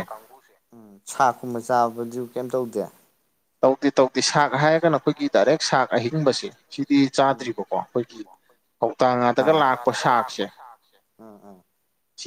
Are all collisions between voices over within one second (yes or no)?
no